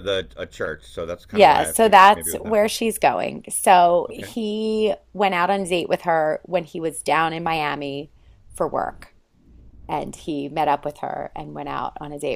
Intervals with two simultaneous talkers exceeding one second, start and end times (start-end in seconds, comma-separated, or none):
1.3-2.7